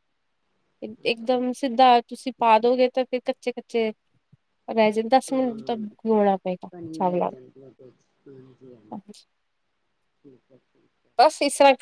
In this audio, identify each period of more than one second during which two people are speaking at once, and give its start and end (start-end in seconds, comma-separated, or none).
none